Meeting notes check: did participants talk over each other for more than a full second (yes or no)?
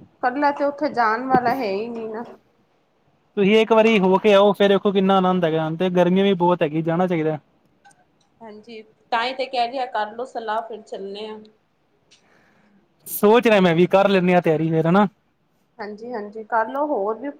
no